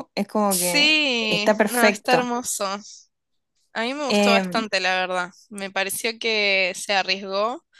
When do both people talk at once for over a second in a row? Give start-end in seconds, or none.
0.5-2.3